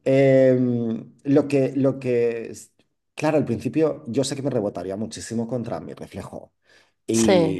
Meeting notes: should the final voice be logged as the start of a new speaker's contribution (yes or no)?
no